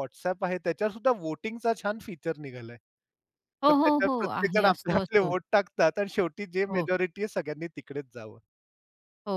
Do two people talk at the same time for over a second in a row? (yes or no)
yes